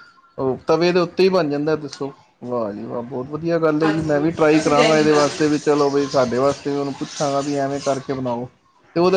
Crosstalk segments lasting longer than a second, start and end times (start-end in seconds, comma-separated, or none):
3.8-5.4